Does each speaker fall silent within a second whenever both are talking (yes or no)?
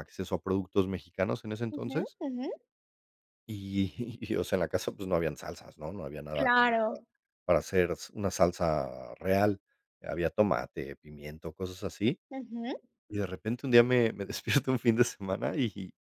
yes